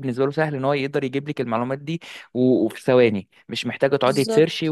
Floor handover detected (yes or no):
no